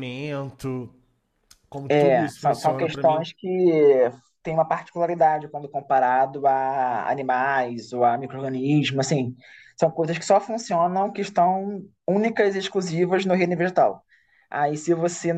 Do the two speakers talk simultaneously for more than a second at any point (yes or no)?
yes